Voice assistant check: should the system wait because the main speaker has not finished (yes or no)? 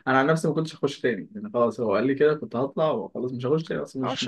no